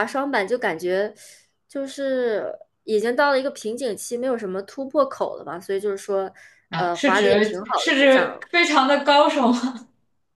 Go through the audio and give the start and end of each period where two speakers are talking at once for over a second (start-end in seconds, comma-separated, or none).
6.8-8.4